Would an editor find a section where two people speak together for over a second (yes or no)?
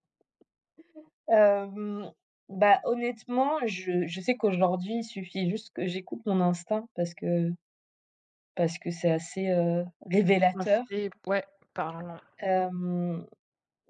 no